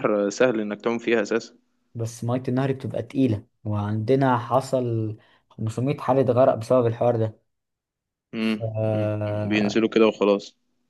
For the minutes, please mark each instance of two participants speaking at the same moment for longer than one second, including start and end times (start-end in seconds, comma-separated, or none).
8.4-9.9